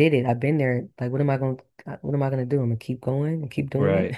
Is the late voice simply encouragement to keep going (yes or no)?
no